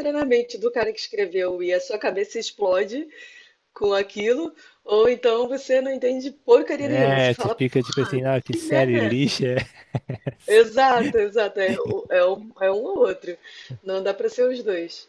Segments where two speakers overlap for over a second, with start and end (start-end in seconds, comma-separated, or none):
6.8-9.4